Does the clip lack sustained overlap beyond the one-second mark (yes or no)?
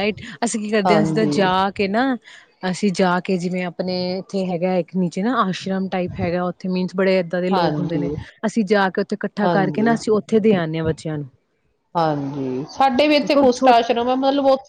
yes